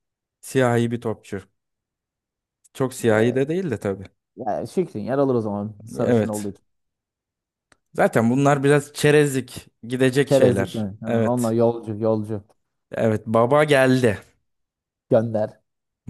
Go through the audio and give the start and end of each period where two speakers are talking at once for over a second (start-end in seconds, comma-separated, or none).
10.2-11.6